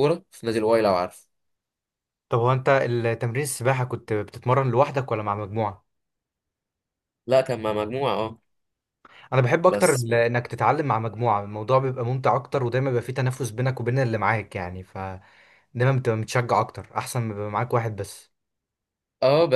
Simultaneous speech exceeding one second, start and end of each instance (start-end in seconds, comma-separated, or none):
none